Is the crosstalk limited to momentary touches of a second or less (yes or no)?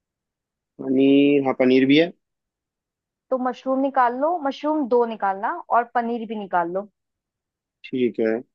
yes